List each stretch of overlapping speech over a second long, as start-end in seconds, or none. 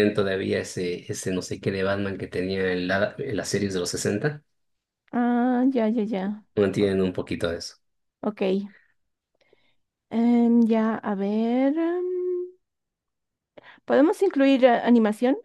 none